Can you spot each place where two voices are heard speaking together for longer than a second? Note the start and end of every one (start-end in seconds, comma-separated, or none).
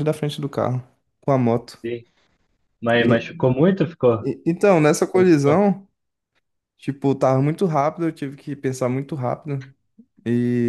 none